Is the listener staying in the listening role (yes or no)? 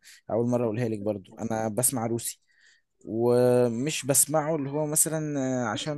yes